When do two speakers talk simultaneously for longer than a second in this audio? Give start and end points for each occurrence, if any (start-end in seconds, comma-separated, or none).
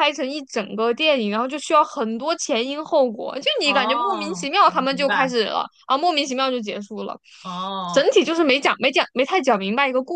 3.6-5.3